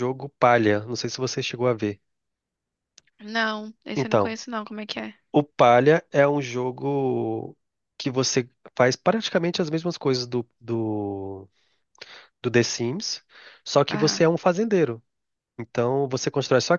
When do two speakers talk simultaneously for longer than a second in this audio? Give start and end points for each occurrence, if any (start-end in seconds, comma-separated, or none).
none